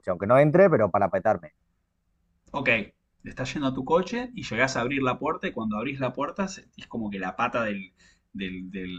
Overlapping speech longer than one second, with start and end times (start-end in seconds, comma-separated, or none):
none